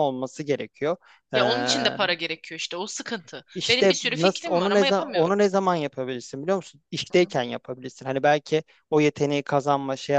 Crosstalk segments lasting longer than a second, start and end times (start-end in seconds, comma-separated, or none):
3.5-5.4